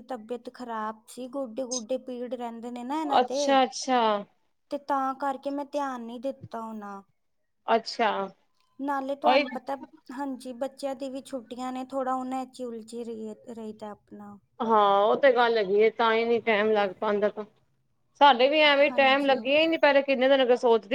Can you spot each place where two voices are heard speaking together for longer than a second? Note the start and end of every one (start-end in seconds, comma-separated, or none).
none